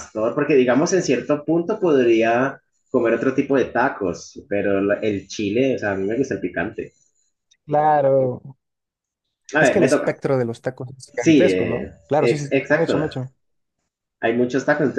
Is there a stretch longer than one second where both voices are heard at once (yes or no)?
yes